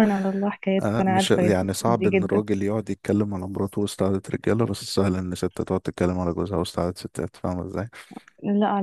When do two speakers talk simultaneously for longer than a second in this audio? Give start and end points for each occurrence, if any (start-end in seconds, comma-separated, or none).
0.8-2.4